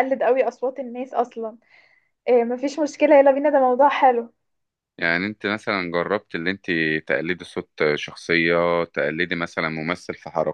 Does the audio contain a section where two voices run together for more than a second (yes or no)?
no